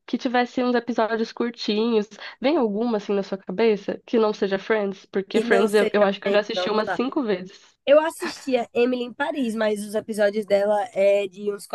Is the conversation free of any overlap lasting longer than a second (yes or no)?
no